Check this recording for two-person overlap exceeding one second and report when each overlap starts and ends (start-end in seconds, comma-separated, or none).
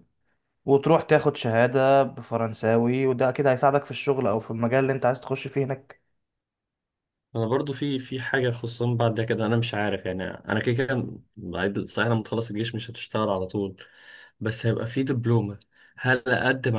none